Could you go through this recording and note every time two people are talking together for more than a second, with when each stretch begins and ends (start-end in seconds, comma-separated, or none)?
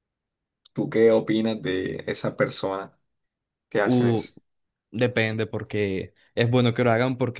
none